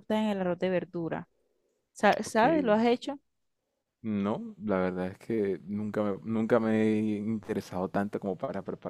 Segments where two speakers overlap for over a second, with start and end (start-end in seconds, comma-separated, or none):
none